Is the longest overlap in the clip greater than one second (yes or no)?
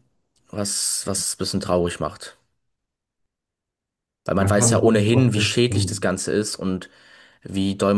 yes